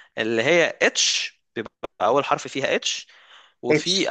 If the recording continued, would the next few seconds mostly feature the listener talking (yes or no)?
no